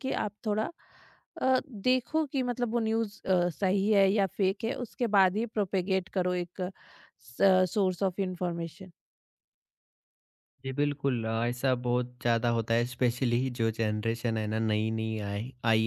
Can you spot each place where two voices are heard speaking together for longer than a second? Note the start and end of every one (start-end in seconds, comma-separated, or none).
none